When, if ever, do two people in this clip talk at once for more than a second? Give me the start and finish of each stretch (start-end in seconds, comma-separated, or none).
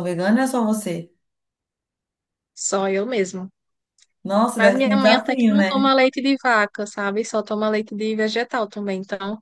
4.6-5.9